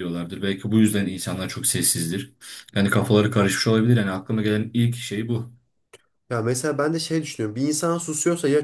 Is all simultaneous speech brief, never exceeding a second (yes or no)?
yes